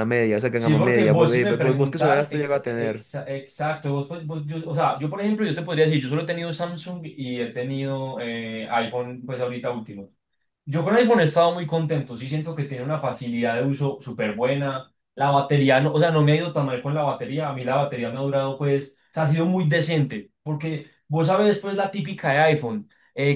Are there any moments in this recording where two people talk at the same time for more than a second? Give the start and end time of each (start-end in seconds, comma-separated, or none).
0.5-3.1